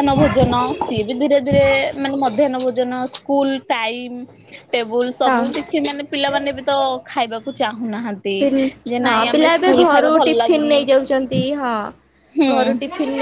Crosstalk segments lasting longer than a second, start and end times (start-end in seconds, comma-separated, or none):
9.1-10.8